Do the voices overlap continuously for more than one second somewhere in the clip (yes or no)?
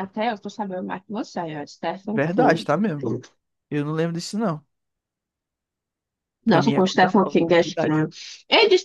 yes